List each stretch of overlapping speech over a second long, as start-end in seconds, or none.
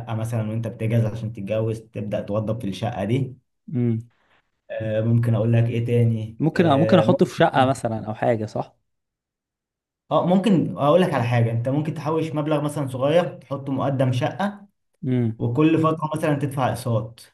6.4-7.7